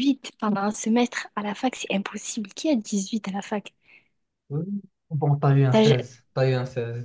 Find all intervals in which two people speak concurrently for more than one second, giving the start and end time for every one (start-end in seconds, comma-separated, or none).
none